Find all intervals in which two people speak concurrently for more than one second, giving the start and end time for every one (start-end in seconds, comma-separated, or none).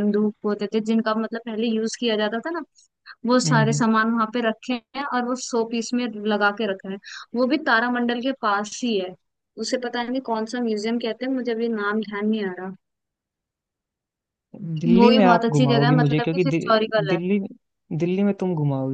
14.9-17.2